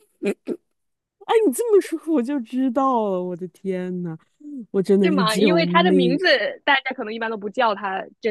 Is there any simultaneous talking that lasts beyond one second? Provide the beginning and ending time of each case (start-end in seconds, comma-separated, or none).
5.0-6.2